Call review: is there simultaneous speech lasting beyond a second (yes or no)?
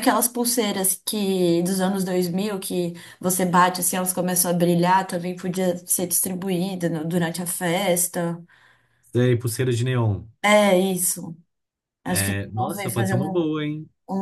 yes